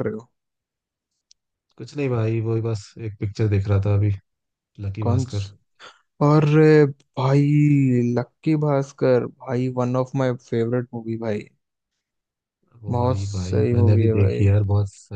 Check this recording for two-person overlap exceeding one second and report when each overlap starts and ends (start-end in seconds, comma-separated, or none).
12.9-14.4